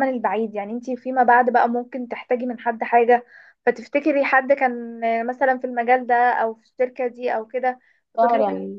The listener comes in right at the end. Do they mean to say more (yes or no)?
no